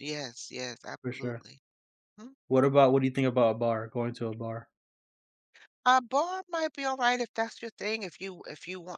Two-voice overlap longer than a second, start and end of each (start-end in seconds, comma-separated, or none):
none